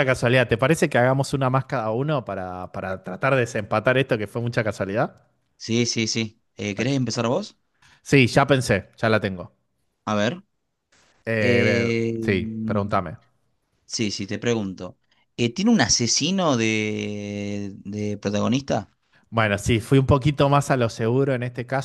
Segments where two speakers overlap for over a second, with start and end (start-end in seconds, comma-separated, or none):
11.4-13.0